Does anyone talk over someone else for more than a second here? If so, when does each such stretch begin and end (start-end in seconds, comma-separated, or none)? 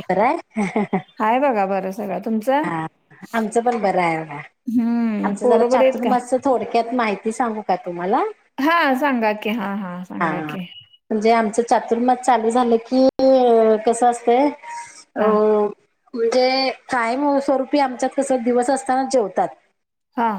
4.8-6.1